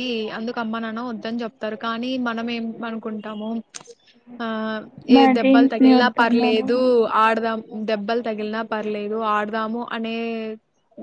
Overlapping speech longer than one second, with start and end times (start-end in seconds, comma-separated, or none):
5.2-6.7